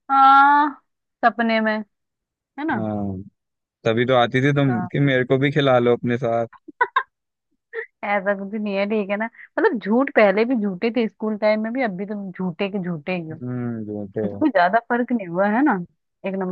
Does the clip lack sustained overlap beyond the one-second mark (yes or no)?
yes